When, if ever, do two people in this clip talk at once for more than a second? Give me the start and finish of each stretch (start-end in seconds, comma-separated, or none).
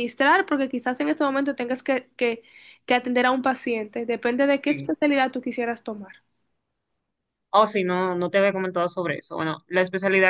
none